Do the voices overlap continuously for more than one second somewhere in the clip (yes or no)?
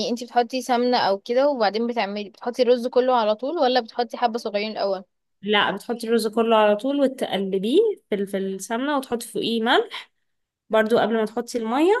no